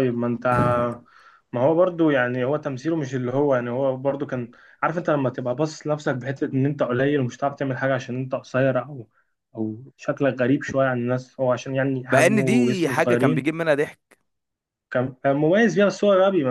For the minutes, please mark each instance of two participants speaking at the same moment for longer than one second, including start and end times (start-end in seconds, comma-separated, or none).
12.1-13.4